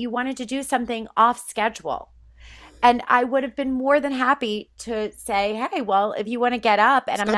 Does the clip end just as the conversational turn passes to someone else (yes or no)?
yes